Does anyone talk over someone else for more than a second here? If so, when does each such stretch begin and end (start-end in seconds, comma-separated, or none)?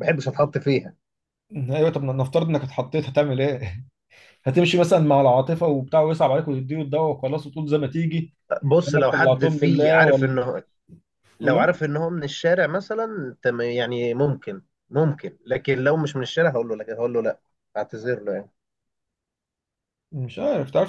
8.8-10.4